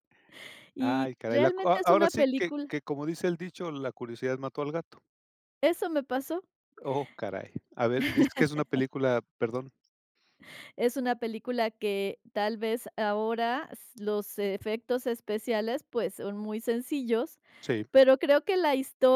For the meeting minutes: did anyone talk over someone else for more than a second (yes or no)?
yes